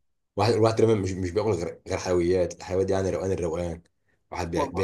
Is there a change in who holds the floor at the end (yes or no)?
no